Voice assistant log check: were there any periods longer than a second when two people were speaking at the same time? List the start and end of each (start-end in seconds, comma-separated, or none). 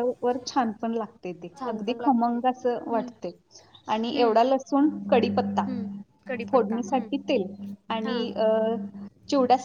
1.6-3.1